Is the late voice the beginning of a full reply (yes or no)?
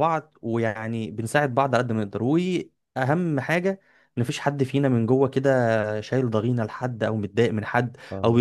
no